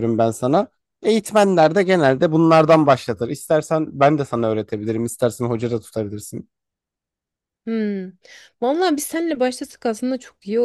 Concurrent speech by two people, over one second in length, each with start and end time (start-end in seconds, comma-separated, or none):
none